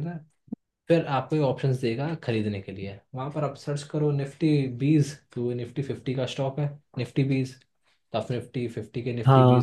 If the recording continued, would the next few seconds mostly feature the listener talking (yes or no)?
no